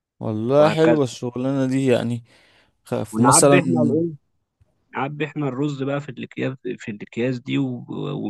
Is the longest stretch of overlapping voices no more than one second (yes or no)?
yes